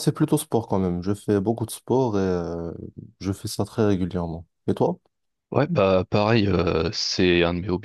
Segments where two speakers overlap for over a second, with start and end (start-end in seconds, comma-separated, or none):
none